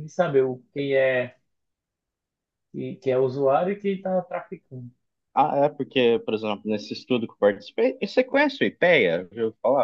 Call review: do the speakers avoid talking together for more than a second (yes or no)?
yes